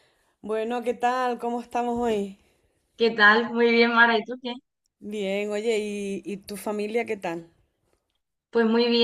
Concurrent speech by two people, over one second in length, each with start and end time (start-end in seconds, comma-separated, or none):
none